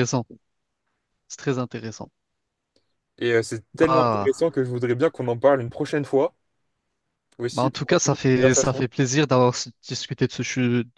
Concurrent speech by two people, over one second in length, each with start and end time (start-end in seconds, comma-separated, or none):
7.5-8.9